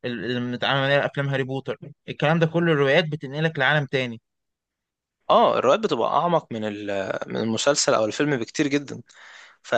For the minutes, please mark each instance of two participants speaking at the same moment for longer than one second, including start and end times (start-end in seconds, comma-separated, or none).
none